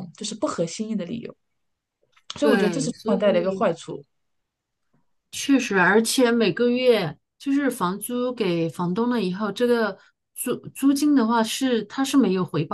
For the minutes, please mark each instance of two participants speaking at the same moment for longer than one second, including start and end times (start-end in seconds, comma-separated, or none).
2.4-3.7